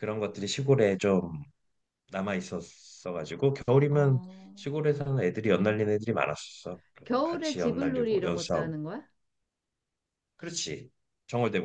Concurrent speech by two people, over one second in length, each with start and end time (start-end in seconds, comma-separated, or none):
7.0-8.7